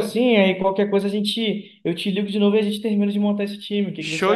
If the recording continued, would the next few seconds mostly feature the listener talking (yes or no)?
yes